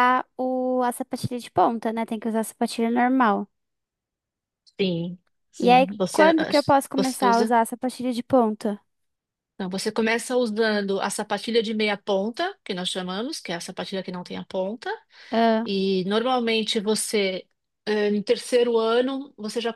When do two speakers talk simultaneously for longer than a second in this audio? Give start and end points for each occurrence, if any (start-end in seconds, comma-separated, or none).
5.6-7.6